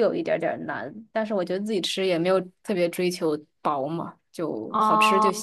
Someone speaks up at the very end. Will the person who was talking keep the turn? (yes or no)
no